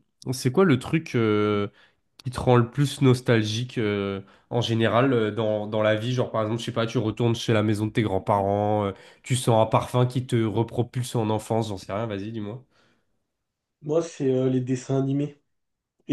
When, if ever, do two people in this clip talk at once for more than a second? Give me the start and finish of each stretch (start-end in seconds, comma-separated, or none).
none